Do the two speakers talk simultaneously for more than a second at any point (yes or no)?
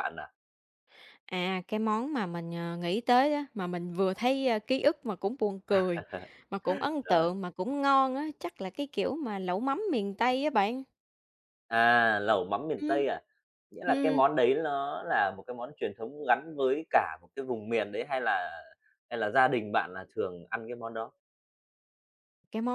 no